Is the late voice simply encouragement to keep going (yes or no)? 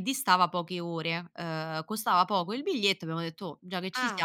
no